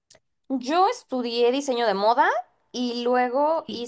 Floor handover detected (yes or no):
no